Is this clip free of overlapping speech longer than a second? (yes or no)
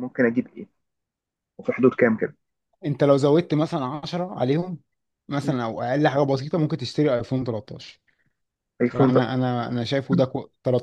yes